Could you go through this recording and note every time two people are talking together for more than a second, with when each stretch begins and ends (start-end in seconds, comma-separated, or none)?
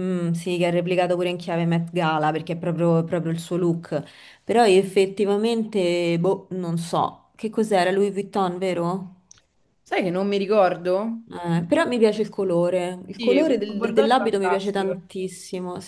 13.1-15.0